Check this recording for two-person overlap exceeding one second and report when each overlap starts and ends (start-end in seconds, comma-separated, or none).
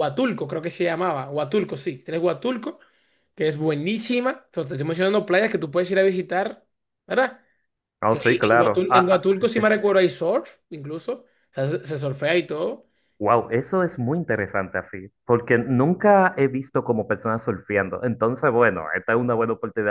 8.1-9.4